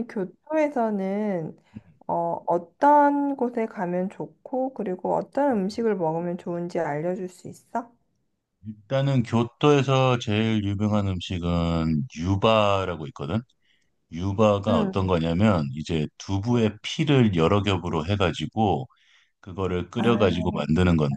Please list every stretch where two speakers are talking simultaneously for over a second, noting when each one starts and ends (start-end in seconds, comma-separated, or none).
none